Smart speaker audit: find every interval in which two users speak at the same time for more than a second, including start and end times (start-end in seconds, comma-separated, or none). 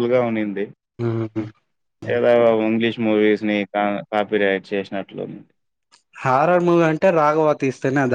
none